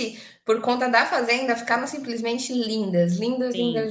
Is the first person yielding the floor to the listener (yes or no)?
yes